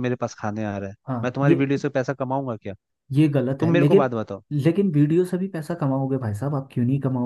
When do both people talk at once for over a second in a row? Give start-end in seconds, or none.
none